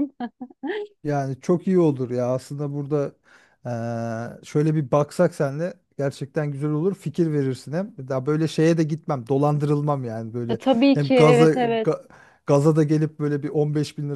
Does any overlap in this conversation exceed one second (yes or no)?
yes